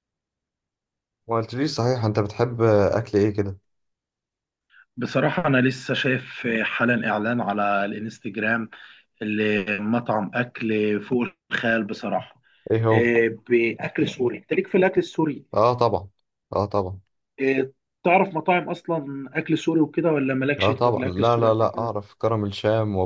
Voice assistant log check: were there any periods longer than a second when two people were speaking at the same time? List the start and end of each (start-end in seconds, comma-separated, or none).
20.6-21.9